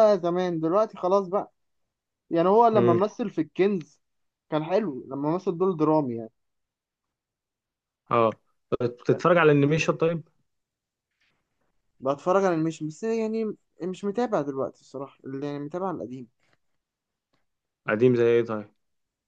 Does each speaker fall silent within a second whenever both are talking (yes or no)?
yes